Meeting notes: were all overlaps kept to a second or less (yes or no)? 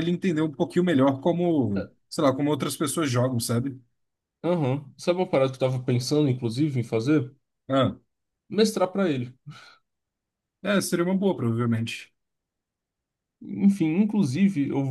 yes